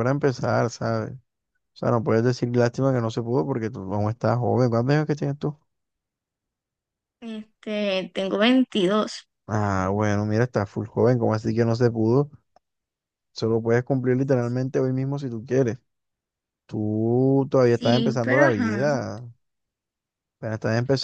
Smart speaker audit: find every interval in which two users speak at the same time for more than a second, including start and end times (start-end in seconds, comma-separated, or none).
17.6-18.9